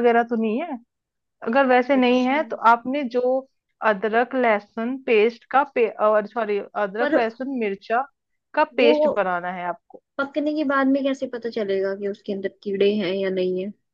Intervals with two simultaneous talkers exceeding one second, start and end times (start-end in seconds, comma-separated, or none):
none